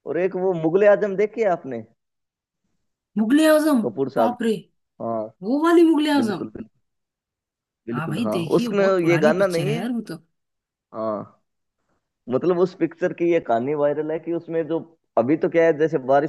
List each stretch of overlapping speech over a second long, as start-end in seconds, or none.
7.9-9.8